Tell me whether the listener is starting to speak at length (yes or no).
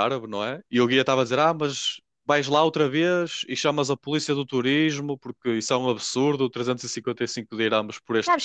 yes